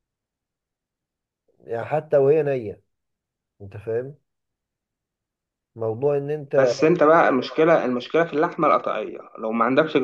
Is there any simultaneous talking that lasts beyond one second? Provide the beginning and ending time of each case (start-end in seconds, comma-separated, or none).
none